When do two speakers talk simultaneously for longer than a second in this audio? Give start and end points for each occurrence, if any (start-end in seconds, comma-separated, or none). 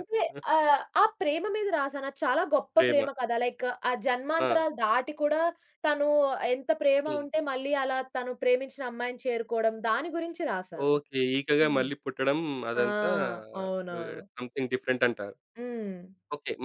none